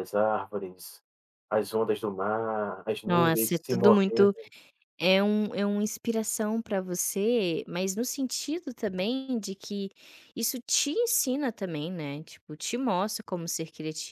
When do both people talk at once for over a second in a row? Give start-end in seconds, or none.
3.0-4.3